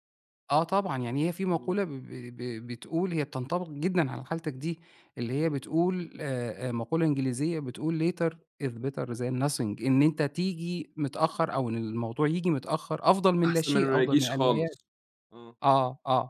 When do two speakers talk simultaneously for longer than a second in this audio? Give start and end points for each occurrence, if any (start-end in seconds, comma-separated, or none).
13.4-14.8